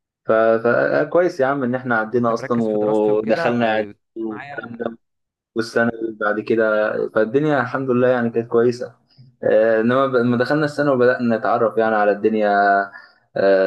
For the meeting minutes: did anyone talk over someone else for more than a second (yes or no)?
yes